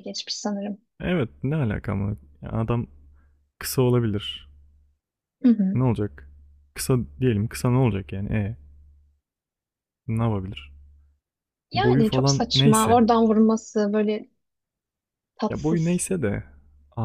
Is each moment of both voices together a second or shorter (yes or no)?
no